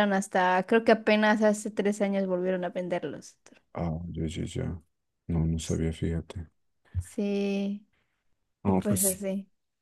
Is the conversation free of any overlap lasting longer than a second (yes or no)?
yes